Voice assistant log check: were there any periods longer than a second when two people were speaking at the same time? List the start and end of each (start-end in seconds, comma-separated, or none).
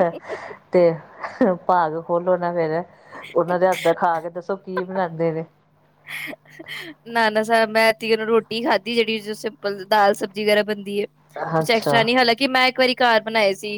none